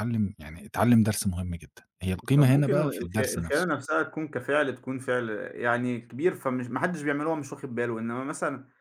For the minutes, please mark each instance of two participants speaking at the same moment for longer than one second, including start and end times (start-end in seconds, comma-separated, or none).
2.4-3.6